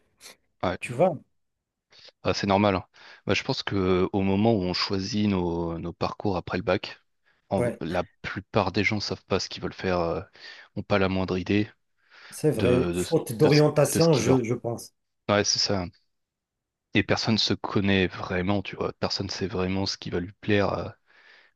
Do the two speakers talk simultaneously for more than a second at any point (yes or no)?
yes